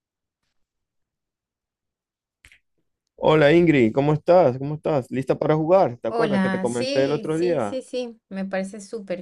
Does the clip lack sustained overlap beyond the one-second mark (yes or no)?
no